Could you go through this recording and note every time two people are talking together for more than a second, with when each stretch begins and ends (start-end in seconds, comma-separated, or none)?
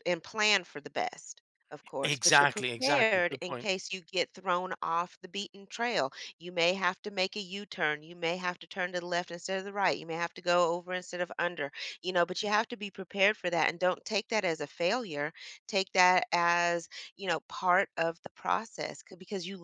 2.0-3.7